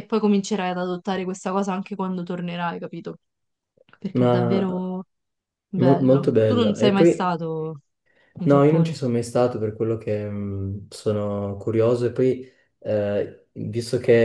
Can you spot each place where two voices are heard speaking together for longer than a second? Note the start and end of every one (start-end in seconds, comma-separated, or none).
5.8-7.4